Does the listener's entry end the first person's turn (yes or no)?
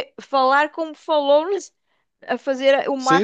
yes